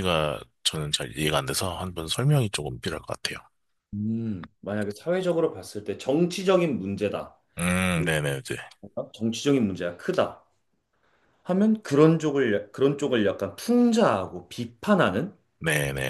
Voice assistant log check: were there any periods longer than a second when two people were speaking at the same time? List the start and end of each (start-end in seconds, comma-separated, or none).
none